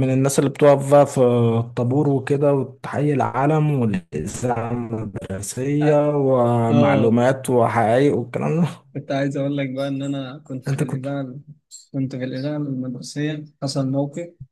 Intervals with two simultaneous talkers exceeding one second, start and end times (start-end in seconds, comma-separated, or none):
none